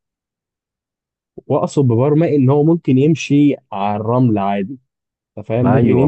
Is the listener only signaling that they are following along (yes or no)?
no